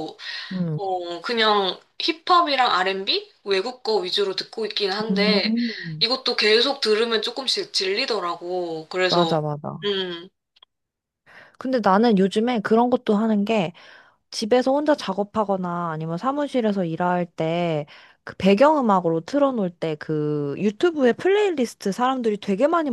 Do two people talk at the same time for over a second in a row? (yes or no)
no